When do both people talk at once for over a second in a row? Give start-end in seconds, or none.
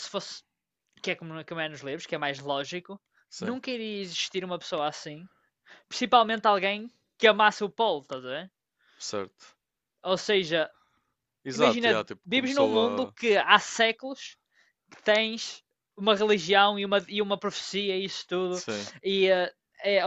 11.5-13.2